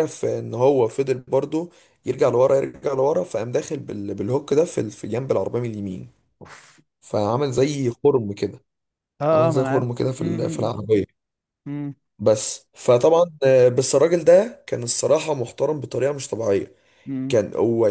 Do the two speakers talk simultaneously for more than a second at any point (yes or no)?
yes